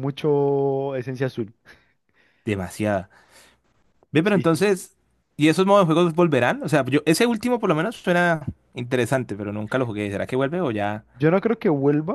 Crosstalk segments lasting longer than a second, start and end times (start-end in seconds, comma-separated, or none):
none